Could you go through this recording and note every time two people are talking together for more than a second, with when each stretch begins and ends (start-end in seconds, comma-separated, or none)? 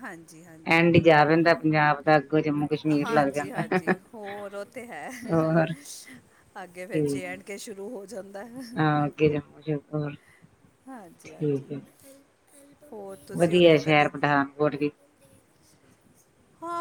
none